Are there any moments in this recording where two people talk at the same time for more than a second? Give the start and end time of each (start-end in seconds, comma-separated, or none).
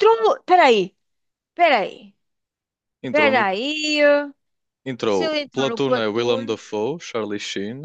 5.0-6.6